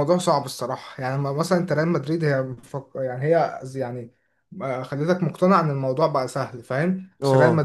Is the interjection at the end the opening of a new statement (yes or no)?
no